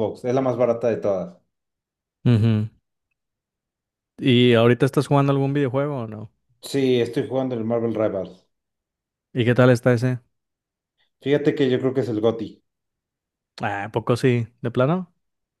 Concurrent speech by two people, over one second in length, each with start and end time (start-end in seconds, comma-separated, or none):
none